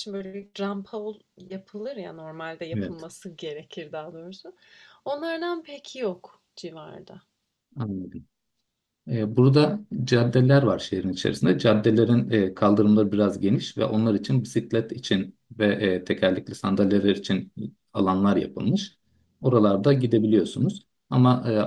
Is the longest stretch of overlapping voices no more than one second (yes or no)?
yes